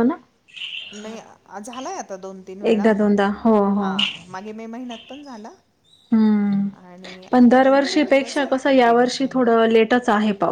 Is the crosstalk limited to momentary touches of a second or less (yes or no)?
no